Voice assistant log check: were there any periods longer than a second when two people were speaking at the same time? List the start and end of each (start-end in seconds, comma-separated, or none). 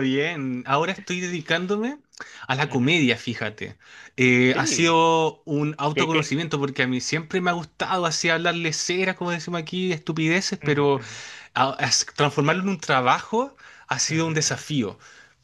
none